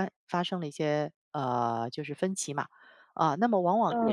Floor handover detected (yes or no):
no